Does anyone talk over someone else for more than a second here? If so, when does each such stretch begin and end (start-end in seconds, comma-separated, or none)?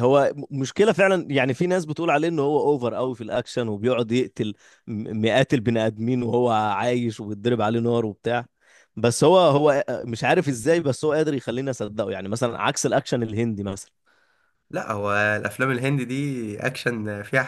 none